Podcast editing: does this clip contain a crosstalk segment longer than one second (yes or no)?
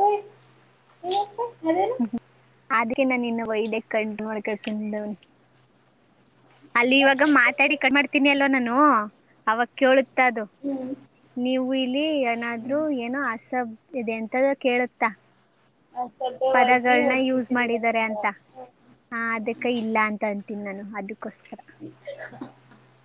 yes